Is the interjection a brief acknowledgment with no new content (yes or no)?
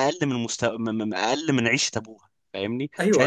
no